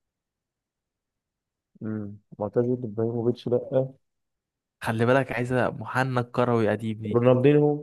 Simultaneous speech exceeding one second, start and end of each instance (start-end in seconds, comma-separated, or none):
none